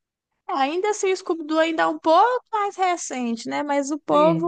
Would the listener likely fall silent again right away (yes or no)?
yes